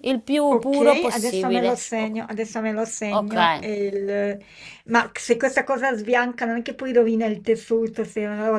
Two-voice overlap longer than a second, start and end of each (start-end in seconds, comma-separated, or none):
0.5-2.1